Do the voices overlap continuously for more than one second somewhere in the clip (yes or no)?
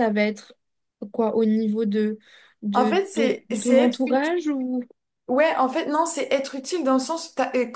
yes